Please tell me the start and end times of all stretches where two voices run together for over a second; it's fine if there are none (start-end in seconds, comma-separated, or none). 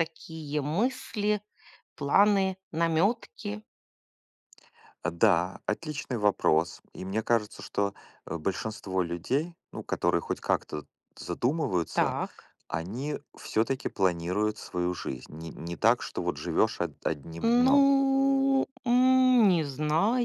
none